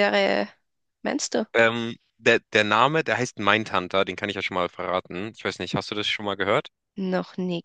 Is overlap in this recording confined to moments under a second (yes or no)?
yes